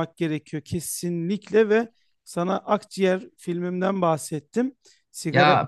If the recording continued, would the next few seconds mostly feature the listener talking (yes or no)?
no